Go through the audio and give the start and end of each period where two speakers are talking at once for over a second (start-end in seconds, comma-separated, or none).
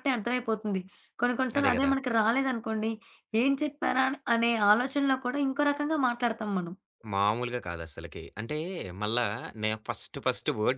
none